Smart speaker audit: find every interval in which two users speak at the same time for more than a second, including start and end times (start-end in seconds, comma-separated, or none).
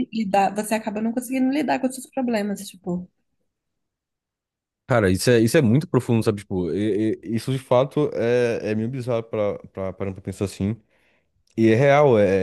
none